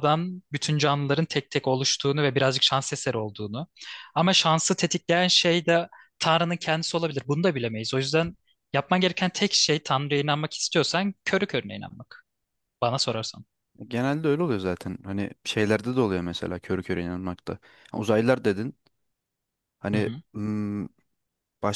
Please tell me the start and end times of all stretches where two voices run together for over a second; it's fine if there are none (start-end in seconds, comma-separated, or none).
none